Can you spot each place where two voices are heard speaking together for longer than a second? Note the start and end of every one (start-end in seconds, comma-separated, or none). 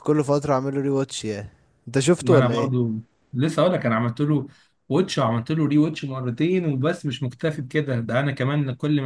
none